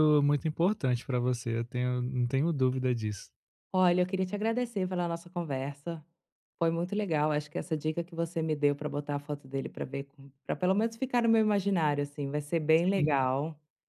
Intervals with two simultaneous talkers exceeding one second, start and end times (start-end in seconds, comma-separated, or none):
none